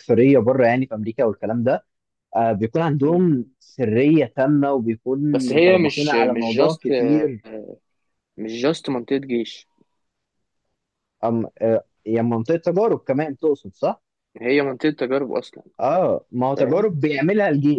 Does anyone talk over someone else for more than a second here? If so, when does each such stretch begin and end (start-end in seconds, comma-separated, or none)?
5.3-6.8